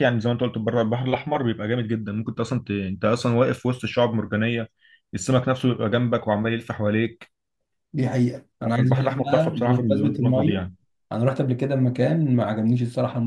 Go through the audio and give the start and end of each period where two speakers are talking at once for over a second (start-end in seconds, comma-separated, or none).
8.6-10.6